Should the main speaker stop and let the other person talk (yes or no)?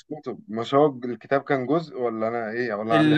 yes